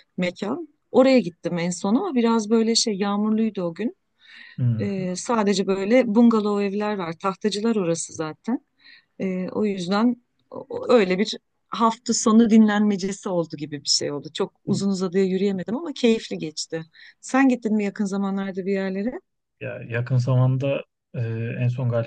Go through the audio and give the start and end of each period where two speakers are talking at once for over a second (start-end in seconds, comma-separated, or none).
none